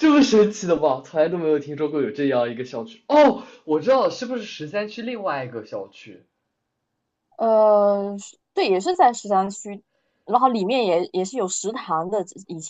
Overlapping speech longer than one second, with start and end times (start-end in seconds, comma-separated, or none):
none